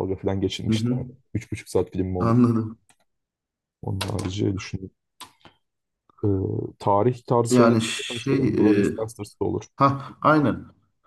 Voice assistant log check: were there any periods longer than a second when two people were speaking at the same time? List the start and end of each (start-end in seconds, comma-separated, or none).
7.5-8.9